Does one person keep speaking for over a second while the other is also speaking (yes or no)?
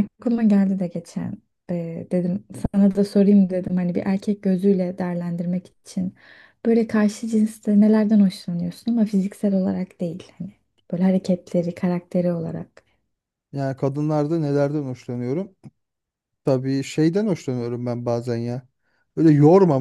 no